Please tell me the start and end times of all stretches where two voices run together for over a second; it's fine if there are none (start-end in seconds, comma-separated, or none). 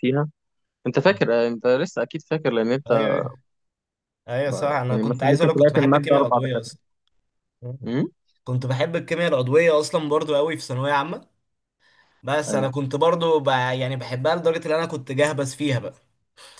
4.5-6.7